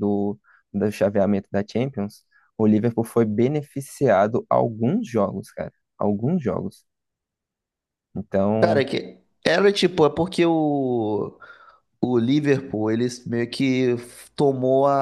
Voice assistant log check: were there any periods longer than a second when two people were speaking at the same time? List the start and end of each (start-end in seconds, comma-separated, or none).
none